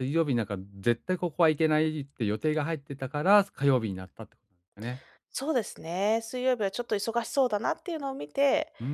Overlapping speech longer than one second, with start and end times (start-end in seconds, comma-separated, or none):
none